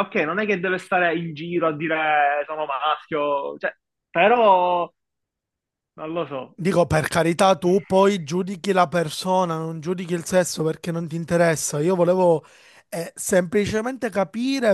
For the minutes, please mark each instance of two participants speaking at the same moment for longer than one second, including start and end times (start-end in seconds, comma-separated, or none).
none